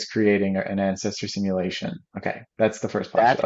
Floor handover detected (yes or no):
yes